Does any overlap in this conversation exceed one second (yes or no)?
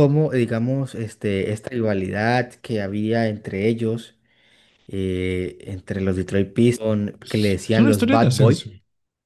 yes